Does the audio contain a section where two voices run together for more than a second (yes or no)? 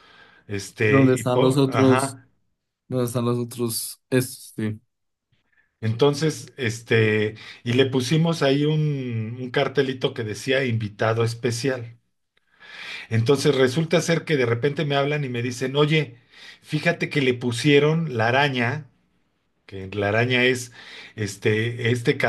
yes